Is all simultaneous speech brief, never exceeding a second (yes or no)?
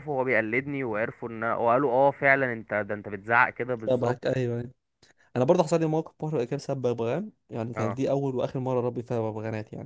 yes